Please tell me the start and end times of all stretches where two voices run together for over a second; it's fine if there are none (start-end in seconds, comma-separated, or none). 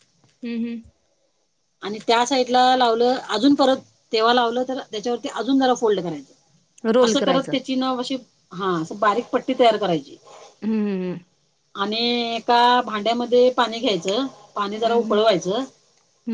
none